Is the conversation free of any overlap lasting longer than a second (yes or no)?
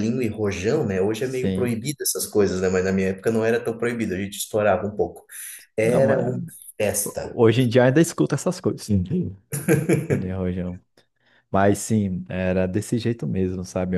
yes